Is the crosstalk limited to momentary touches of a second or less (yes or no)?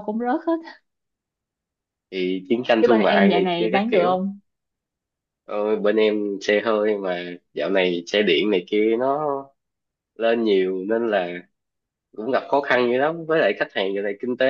no